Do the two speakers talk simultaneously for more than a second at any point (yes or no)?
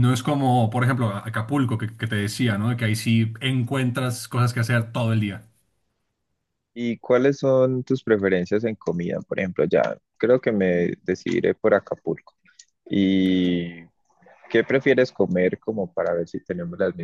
no